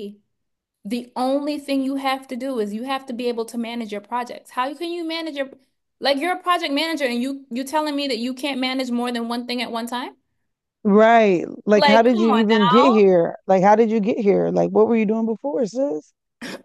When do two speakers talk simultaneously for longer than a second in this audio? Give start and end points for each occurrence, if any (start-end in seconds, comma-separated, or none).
11.8-13.0